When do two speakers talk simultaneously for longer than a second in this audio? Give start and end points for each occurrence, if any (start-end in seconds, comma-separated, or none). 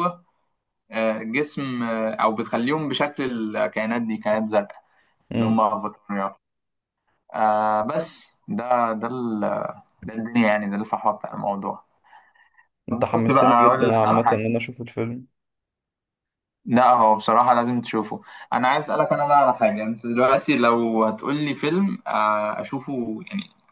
13.1-14.5